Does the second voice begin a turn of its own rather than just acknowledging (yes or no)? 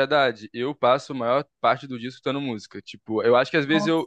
no